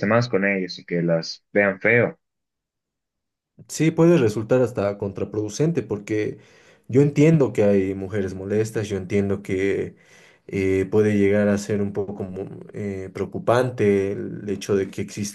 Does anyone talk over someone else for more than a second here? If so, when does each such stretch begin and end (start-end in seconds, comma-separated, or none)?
none